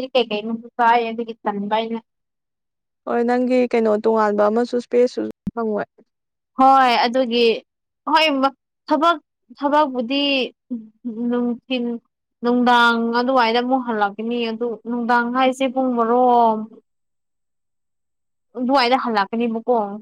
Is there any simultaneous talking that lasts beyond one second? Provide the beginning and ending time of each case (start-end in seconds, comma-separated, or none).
none